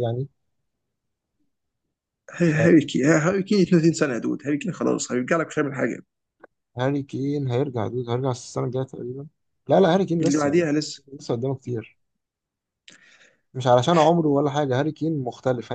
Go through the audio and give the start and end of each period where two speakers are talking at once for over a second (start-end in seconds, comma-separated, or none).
none